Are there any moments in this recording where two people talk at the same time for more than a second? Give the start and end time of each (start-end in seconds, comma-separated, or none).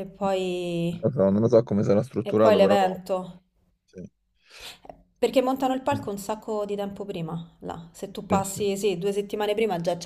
none